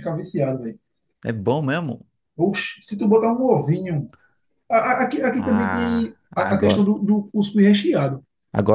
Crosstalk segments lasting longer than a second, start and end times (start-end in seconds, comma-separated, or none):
5.4-6.8